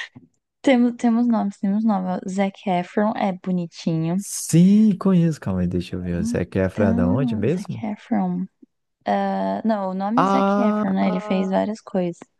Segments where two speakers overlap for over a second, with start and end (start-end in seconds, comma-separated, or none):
6.1-7.8, 10.2-11.5